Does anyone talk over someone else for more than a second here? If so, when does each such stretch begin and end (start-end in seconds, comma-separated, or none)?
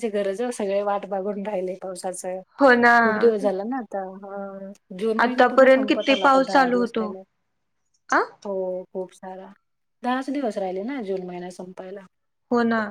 5.2-7.1